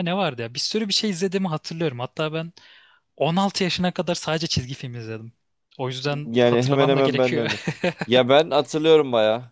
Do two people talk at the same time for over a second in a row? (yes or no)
yes